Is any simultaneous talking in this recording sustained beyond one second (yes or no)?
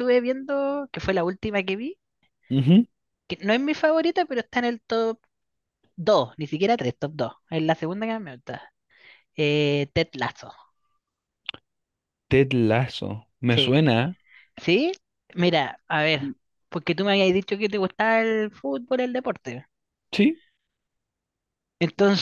no